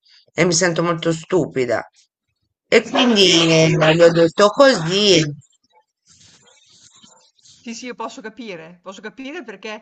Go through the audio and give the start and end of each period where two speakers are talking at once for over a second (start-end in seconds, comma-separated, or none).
none